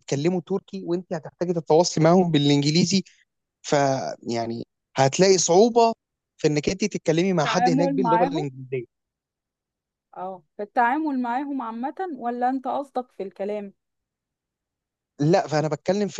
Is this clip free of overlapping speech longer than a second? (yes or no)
no